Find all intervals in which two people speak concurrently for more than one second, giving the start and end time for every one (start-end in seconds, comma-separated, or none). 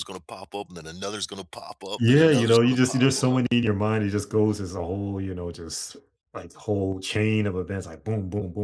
2.0-3.4